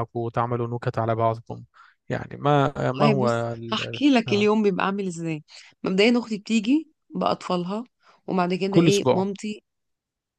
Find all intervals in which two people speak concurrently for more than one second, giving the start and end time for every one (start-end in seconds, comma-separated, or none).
2.9-4.5